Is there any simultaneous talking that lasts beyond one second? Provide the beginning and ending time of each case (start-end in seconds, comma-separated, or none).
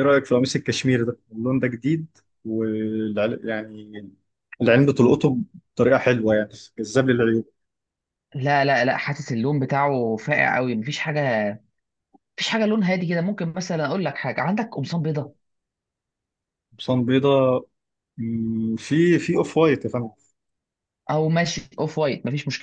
none